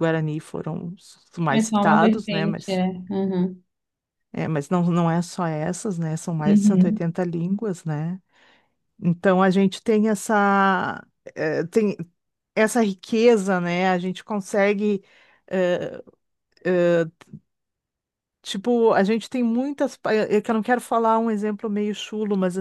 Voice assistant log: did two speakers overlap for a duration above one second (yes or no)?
yes